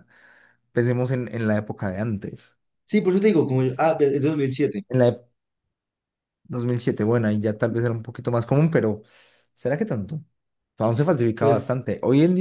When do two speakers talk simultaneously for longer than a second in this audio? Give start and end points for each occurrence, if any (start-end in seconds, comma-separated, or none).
none